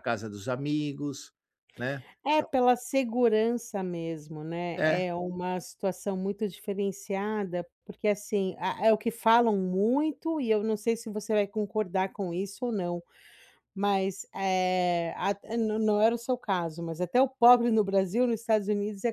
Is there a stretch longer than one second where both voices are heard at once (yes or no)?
no